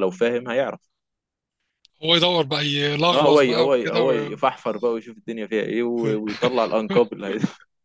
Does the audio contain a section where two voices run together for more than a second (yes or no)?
yes